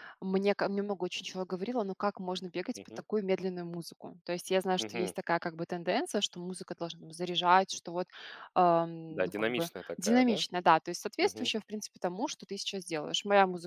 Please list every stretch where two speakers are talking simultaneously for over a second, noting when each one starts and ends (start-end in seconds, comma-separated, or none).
9.1-10.4